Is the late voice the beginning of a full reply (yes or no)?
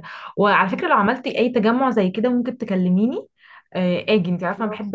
no